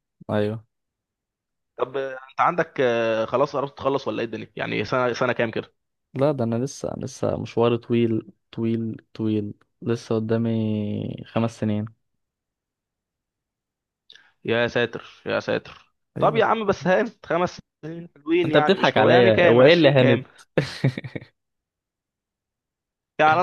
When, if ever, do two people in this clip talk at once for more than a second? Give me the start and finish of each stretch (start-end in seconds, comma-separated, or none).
18.4-20.2